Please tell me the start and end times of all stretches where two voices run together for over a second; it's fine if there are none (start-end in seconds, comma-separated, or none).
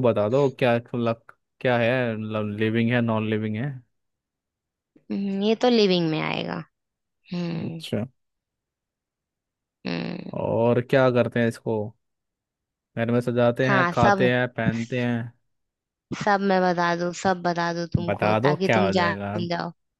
18.1-19.4